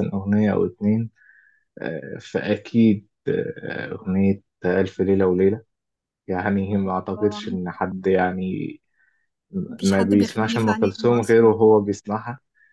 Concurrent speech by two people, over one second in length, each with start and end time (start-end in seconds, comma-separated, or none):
9.8-11.6